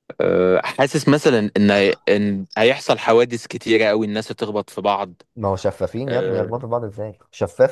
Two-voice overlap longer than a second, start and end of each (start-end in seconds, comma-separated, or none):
none